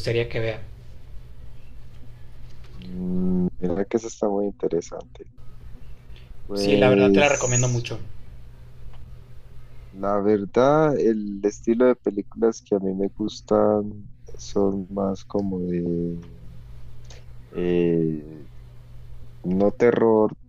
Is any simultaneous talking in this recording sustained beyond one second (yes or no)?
yes